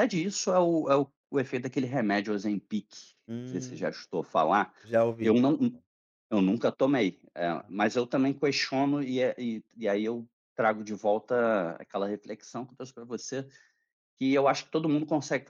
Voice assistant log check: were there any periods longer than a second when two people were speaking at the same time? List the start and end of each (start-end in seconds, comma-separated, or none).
none